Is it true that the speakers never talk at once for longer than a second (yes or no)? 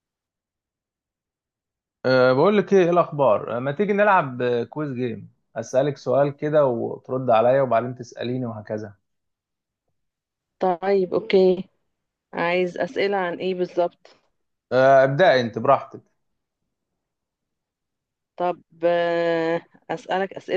yes